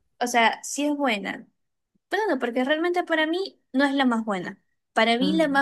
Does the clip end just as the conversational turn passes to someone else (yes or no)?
no